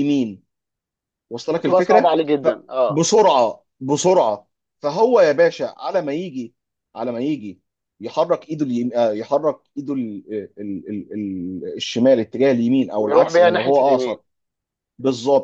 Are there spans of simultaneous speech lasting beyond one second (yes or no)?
yes